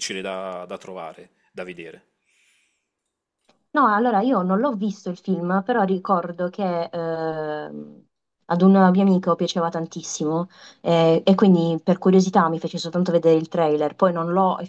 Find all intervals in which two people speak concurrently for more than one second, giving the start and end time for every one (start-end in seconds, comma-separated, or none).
none